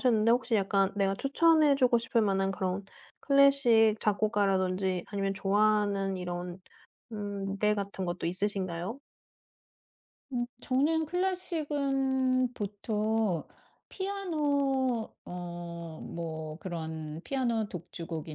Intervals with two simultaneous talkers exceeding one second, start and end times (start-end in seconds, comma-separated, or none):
none